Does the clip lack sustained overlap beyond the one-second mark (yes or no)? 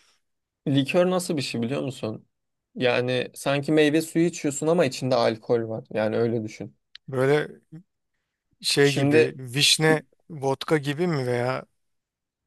yes